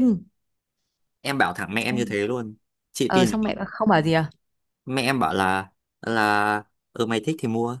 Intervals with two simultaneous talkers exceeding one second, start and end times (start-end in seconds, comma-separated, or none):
none